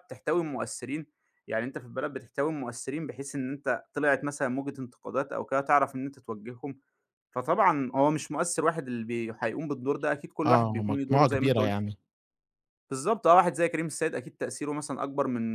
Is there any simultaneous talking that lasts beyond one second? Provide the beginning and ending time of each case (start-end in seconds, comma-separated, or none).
10.4-11.7